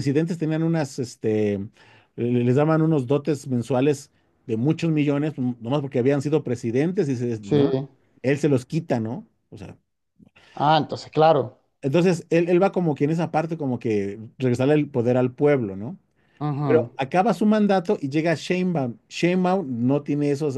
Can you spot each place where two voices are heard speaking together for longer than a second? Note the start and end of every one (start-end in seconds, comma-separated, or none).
none